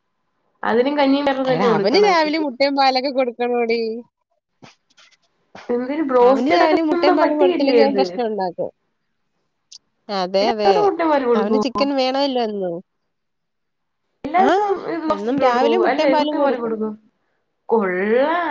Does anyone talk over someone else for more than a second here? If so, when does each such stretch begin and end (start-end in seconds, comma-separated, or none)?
6.3-8.0